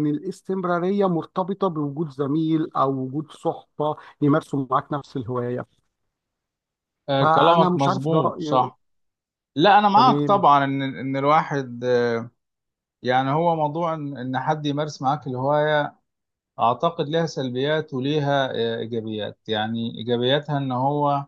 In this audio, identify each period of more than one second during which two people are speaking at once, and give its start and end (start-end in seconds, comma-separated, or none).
7.2-8.7